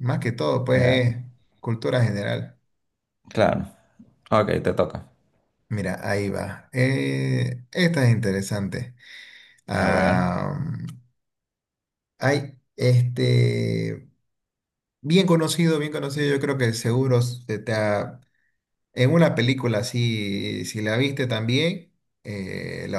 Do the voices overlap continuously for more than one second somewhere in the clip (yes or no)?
no